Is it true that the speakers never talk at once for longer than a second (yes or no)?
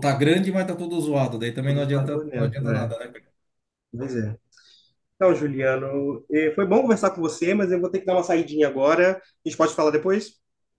no